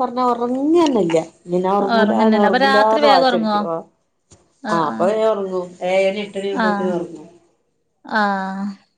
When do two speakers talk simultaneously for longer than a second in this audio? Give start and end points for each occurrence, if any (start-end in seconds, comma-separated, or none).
2.0-3.6